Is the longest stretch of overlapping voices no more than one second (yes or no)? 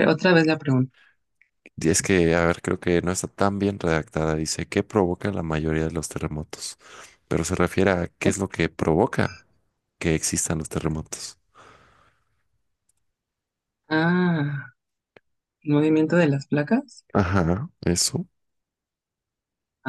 yes